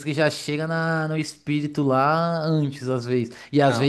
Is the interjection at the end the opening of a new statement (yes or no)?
no